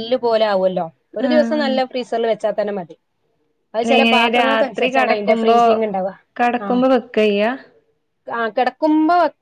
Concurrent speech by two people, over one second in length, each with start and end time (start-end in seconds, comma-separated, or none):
4.0-5.6